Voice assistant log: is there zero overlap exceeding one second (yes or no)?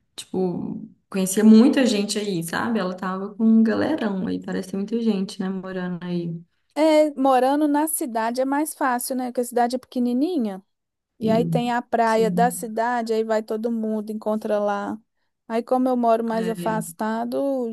no